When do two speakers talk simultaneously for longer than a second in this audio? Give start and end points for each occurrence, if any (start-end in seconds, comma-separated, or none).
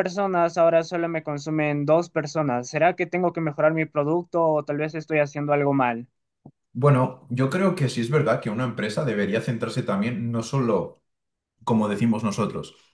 none